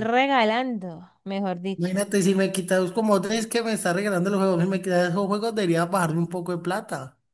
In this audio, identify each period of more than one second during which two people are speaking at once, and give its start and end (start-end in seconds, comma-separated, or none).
none